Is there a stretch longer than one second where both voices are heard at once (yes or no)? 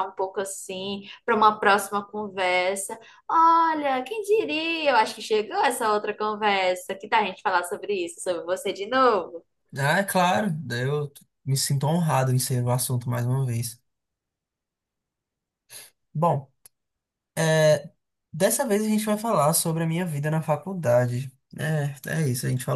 no